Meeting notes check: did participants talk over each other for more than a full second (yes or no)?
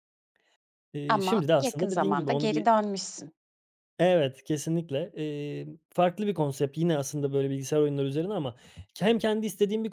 yes